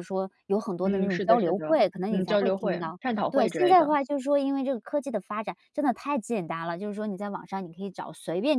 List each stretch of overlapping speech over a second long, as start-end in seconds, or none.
0.8-4.0